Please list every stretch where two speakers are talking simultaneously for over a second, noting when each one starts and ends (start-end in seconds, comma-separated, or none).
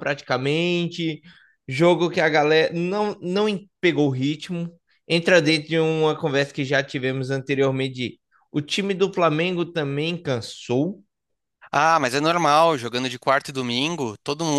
none